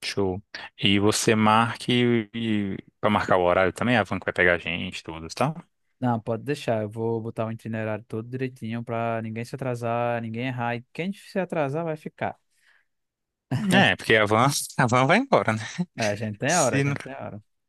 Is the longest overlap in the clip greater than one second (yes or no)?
no